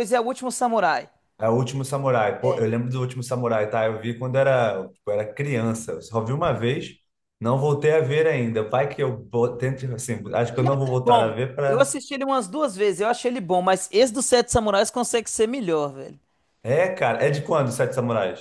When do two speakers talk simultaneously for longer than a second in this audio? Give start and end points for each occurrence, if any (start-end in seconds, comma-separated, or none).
10.5-11.9